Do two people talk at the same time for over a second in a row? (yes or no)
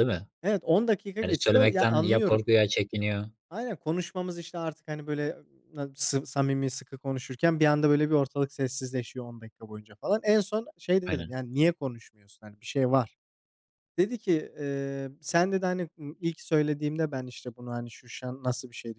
yes